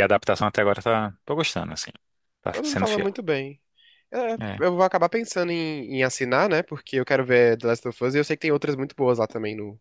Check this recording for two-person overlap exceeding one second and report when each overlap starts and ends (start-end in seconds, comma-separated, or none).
none